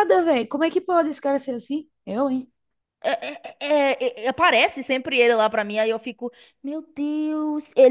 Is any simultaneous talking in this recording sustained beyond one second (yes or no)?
no